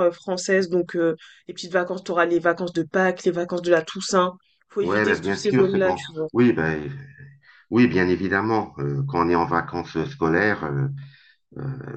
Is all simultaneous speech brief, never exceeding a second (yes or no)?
no